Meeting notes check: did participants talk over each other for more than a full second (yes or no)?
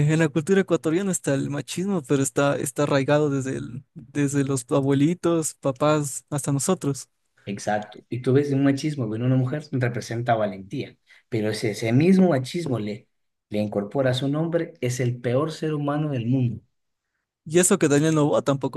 no